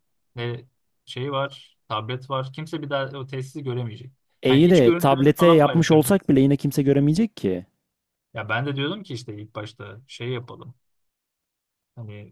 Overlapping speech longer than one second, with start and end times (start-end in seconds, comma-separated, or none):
4.4-6.2